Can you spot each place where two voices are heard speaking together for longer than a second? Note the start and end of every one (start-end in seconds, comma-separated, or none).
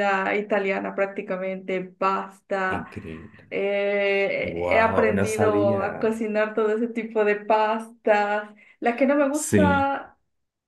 4.4-6.2